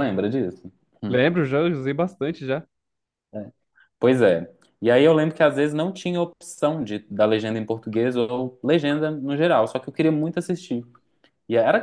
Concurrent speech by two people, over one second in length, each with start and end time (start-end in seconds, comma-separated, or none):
none